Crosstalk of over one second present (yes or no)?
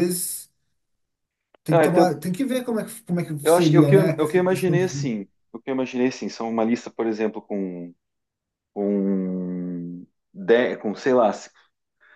yes